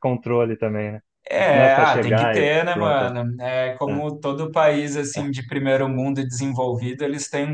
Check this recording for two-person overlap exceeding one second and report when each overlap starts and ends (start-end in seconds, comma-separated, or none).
1.5-3.1